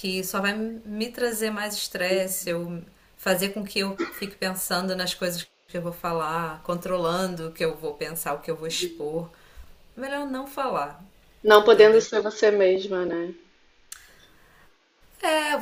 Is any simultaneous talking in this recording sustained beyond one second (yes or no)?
no